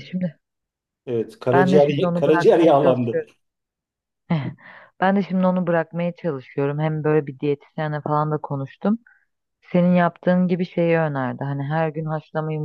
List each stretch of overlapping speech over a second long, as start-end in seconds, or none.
1.5-3.2